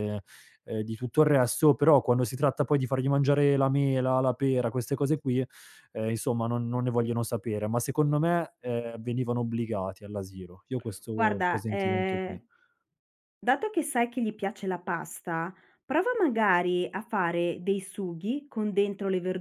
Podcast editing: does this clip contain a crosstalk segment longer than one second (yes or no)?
yes